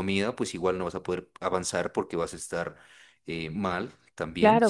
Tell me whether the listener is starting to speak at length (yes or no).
yes